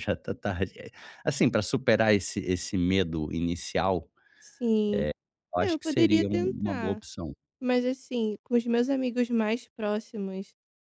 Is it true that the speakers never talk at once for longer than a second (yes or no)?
no